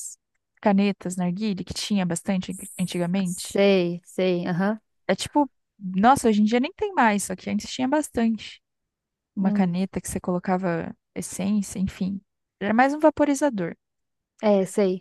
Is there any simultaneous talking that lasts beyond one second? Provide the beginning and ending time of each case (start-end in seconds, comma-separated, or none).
none